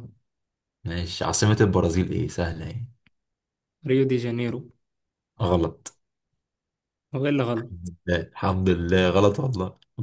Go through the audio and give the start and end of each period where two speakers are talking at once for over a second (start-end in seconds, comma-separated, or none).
none